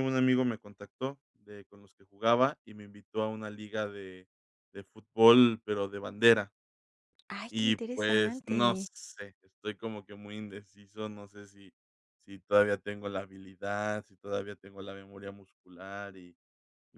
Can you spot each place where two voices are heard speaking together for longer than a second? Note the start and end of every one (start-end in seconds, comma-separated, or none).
7.5-8.9